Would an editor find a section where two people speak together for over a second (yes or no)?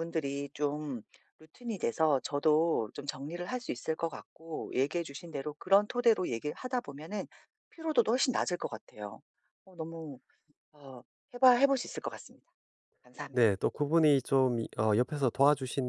no